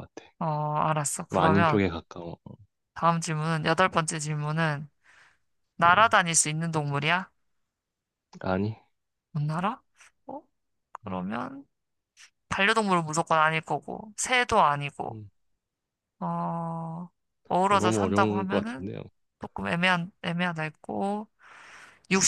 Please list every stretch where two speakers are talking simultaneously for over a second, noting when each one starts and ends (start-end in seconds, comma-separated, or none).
17.7-18.9